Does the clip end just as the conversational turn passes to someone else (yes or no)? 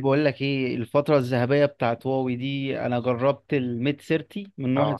no